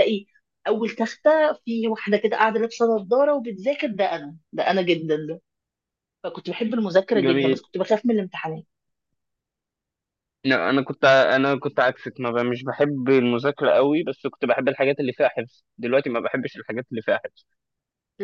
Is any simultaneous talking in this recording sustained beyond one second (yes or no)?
no